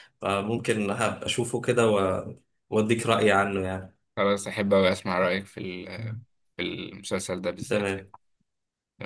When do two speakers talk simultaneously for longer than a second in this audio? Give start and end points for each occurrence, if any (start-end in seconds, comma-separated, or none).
none